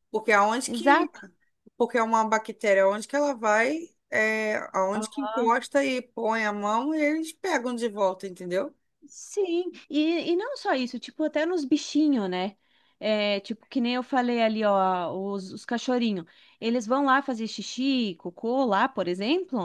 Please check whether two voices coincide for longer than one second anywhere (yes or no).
no